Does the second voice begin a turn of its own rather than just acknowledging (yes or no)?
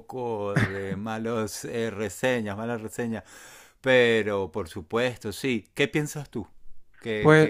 yes